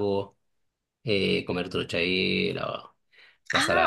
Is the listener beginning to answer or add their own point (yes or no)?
yes